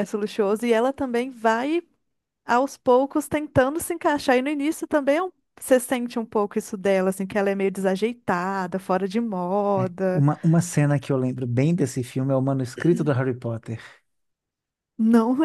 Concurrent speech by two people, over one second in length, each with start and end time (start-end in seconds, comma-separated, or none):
none